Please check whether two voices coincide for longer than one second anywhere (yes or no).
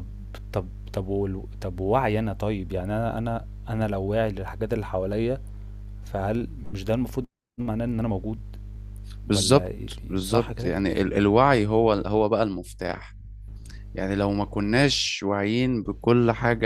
yes